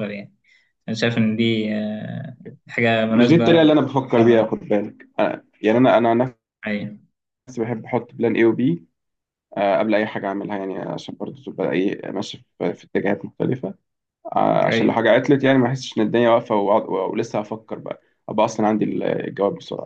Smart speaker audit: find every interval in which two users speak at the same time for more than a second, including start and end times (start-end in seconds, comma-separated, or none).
3.1-4.5